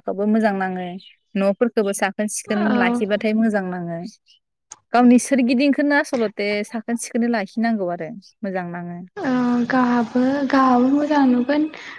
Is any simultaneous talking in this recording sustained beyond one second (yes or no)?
no